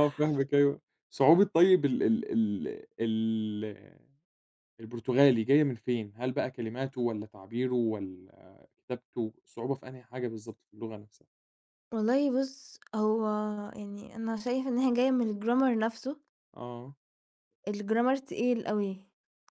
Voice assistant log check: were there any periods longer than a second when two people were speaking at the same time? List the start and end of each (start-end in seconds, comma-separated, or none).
none